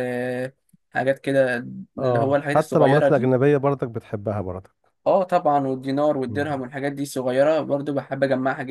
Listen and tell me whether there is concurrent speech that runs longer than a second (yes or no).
yes